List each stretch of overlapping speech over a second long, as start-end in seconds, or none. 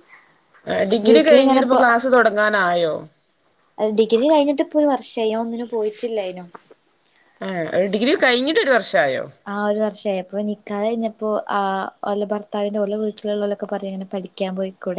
none